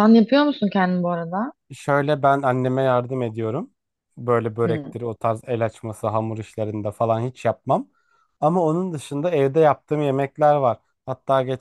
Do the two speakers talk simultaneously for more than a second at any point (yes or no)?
no